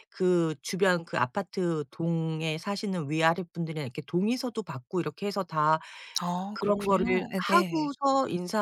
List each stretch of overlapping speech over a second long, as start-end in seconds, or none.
6.5-7.9